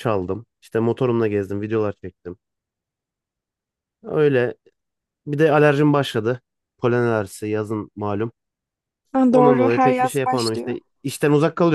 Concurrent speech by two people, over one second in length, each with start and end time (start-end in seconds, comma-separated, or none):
9.3-10.8